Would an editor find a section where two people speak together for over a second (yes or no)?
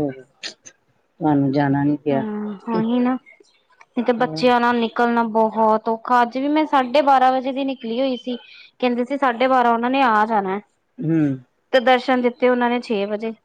no